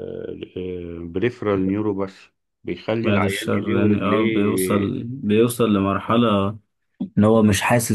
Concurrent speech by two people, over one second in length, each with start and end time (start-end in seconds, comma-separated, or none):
3.0-4.9